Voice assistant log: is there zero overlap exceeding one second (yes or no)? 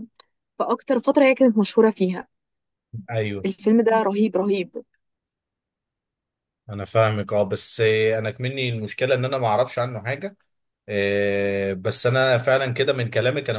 yes